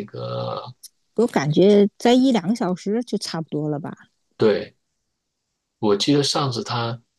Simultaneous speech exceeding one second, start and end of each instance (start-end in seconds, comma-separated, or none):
none